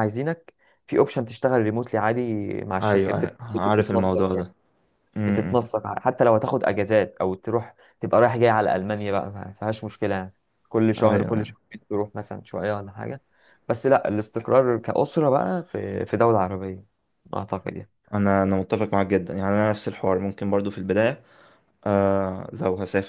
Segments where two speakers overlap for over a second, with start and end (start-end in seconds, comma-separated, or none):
2.8-4.3